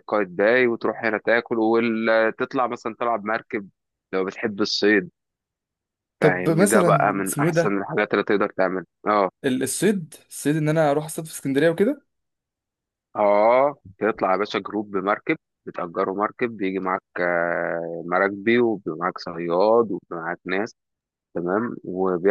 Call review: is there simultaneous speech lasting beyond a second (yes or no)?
yes